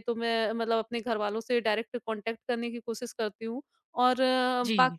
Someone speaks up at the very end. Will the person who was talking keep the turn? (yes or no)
yes